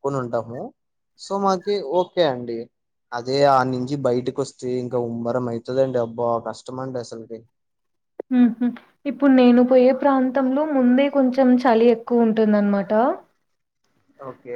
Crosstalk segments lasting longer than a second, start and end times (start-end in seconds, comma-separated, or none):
none